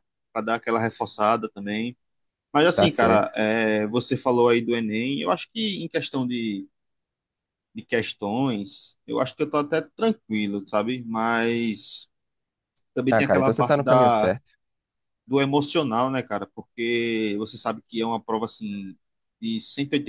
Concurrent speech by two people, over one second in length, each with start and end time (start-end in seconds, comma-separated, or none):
13.1-14.3